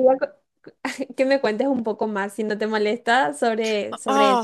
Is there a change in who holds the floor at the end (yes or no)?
yes